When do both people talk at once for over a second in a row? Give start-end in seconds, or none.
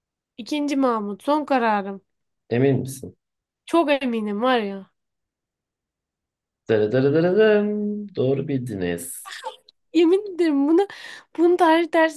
none